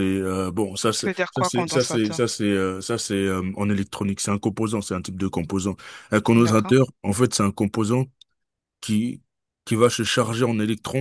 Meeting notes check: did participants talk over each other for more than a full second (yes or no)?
yes